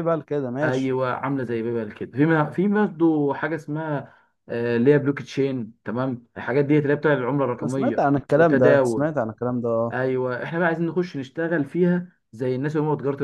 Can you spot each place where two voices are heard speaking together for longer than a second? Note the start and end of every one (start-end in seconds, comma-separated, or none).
7.6-9.1